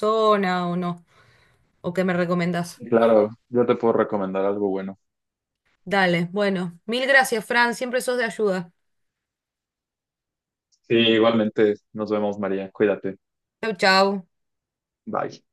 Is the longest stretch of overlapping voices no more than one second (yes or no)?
yes